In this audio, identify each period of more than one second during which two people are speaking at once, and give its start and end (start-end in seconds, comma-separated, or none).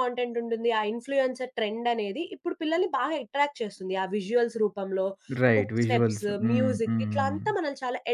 5.5-7.4